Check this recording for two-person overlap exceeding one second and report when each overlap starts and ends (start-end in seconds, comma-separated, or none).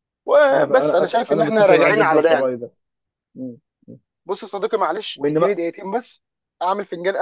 0.5-2.5